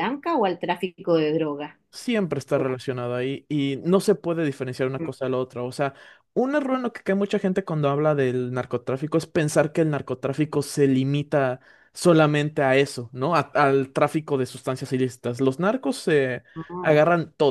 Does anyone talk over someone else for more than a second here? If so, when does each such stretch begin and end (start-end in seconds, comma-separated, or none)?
none